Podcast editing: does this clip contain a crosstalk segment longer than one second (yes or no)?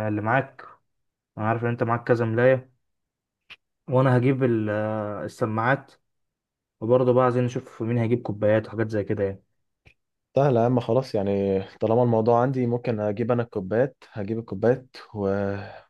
no